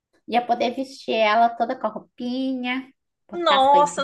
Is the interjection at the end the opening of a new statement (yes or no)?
yes